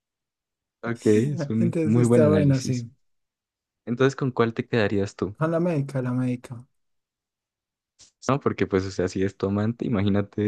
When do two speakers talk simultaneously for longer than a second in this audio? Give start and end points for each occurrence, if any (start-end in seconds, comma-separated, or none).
1.6-2.9